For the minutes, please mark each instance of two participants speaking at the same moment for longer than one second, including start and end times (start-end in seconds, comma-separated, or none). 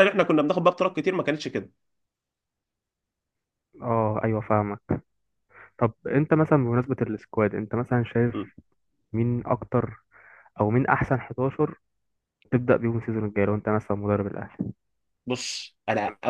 none